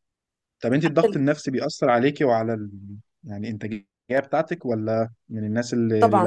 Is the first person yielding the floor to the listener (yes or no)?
yes